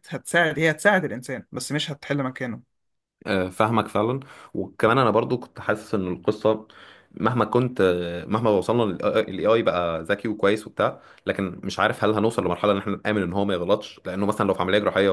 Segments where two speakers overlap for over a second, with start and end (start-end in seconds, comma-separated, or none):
none